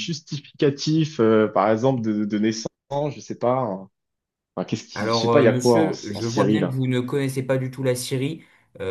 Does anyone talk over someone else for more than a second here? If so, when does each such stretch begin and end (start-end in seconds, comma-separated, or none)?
4.9-6.8